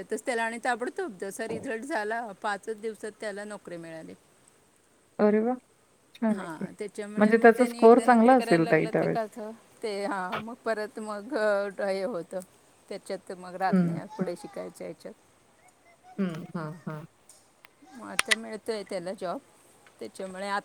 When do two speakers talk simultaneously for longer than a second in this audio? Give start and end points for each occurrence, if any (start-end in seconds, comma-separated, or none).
7.7-9.2